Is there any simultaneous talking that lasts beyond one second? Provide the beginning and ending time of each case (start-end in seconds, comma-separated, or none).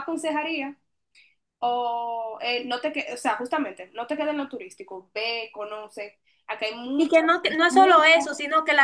7.0-8.3